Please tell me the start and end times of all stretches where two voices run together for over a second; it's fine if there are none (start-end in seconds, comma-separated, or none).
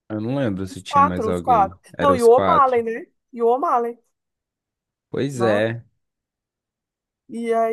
0.7-2.9